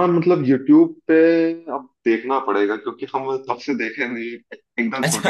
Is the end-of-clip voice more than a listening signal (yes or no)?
yes